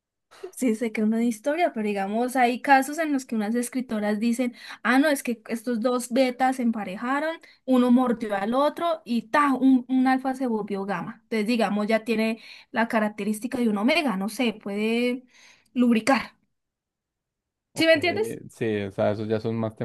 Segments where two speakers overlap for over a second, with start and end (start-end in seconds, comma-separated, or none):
none